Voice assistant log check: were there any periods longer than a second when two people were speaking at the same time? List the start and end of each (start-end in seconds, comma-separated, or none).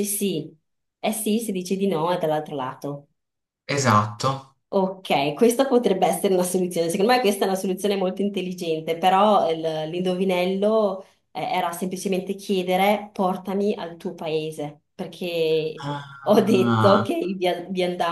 15.8-17.1